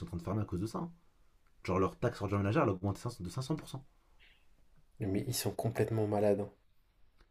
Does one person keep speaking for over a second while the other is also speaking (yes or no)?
no